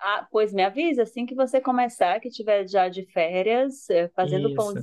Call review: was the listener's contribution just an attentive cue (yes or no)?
yes